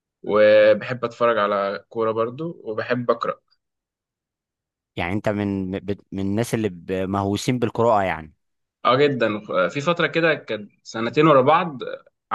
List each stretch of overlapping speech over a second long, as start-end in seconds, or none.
none